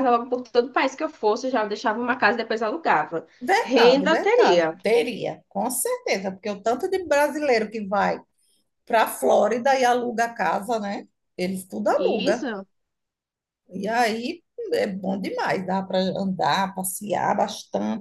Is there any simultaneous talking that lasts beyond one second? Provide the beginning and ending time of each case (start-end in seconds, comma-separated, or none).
3.4-4.8